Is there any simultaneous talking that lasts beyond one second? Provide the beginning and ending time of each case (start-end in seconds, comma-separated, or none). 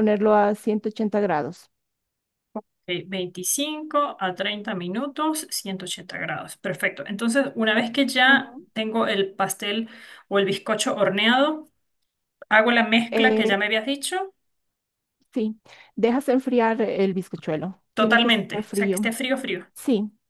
17.9-19.1